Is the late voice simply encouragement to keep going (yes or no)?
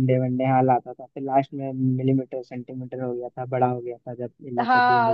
no